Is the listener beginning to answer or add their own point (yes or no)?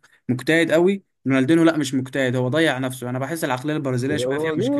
yes